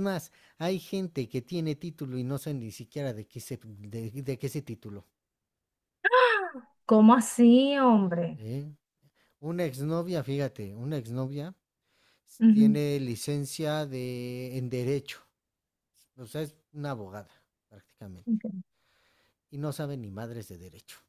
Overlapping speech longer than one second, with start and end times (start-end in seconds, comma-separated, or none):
none